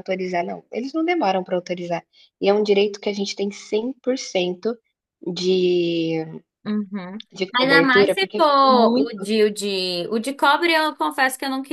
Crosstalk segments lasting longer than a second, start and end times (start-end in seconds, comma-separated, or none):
7.6-9.3